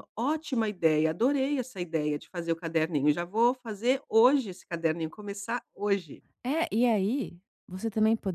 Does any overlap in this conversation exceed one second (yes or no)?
no